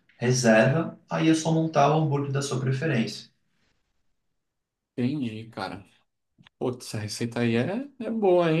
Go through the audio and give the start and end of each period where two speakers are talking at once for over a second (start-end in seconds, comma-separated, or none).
none